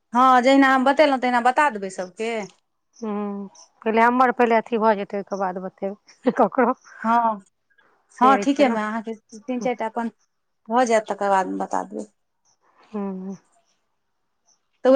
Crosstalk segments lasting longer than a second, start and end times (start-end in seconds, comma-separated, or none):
none